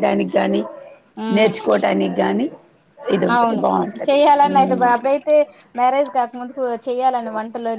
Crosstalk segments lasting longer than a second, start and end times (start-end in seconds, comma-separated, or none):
none